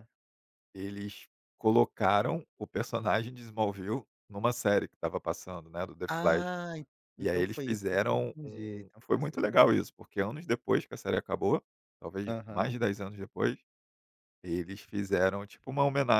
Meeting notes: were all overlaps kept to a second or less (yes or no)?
no